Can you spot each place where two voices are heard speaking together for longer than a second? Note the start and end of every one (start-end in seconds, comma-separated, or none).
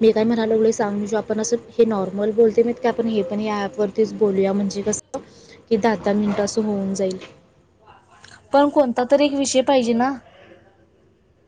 none